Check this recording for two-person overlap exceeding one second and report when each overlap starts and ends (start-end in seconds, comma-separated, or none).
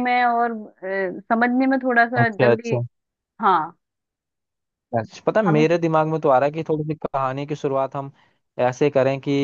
none